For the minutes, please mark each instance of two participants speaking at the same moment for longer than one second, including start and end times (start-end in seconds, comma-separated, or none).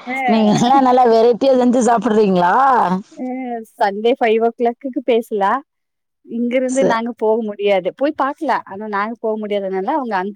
none